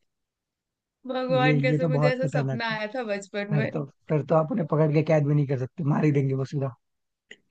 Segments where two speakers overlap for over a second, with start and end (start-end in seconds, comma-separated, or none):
1.3-2.8